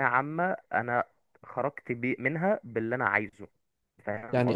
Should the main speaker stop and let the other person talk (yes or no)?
yes